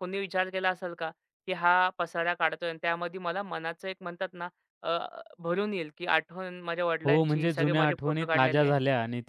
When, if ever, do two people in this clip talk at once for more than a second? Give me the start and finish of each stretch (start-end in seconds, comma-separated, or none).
7.0-8.7